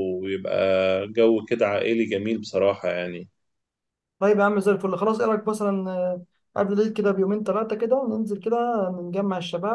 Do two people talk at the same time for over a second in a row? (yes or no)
no